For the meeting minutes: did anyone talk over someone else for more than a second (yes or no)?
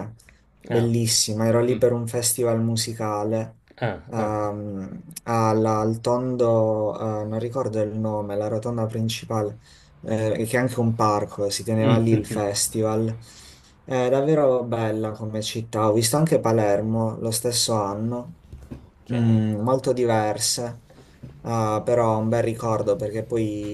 no